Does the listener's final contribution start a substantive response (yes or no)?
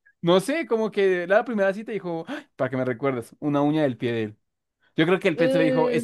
no